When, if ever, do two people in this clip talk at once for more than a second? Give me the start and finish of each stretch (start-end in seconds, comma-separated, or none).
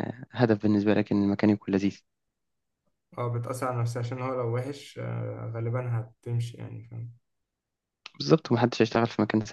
none